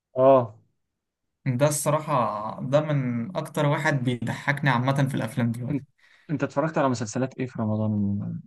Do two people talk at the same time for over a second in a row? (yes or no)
no